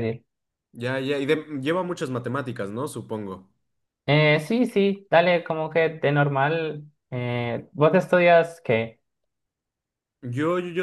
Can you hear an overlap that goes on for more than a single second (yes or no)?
no